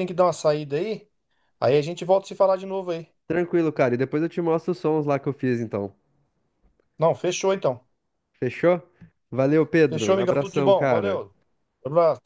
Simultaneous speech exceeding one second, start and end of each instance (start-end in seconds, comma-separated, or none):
9.9-11.2